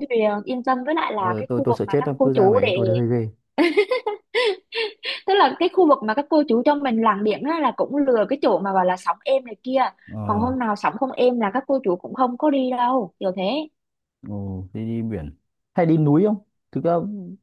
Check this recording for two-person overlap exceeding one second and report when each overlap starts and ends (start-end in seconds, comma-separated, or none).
1.2-2.8